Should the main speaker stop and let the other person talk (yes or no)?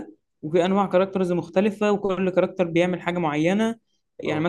no